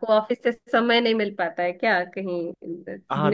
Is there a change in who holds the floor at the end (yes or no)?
yes